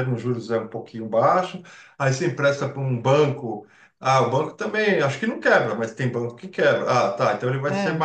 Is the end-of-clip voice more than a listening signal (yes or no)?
no